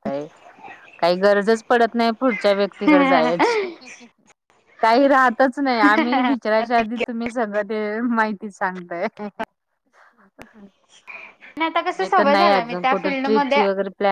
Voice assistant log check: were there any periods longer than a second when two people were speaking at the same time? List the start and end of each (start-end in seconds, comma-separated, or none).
12.0-13.6